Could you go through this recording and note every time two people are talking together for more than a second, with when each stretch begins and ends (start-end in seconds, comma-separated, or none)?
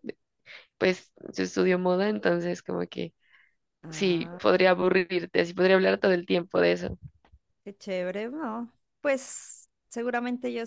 none